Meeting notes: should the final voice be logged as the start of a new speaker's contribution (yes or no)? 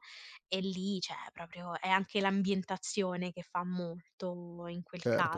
yes